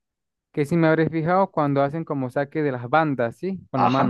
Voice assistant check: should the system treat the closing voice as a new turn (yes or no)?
yes